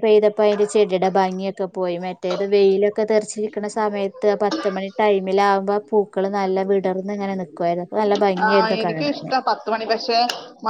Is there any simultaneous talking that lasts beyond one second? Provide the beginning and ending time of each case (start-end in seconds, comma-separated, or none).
none